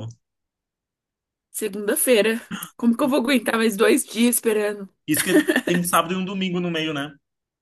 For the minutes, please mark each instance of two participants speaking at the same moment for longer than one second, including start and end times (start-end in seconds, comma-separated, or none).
none